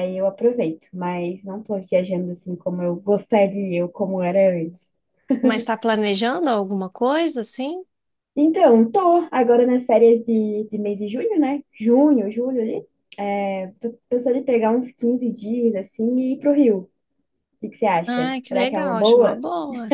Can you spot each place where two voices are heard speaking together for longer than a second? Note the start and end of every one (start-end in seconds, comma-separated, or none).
18.1-19.4